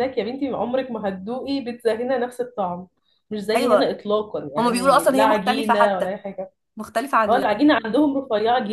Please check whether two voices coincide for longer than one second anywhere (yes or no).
yes